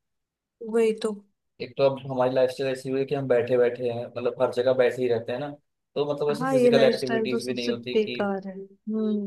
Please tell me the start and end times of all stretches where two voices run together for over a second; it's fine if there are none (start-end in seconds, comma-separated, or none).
6.4-8.2